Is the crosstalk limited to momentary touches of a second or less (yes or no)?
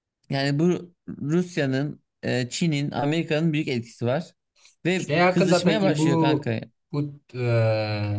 no